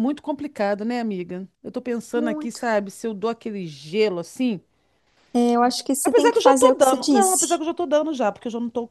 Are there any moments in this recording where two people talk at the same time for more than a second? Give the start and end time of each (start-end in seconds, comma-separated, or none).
6.0-7.6